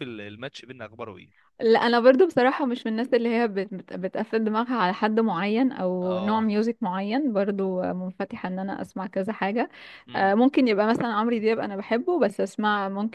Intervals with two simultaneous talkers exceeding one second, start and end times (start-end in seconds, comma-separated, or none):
none